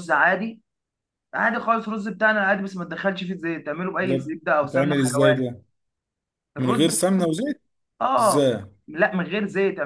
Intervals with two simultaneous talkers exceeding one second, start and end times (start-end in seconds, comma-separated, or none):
4.0-5.5